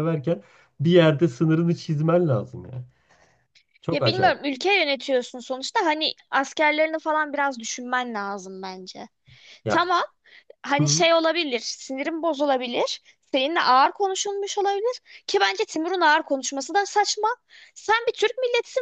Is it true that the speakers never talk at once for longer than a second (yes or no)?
yes